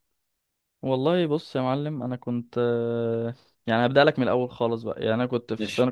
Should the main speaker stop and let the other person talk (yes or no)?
no